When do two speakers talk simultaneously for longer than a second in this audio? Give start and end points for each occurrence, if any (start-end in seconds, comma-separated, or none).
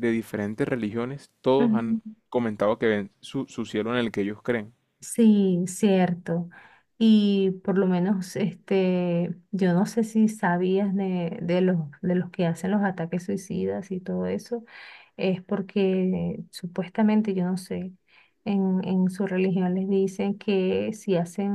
none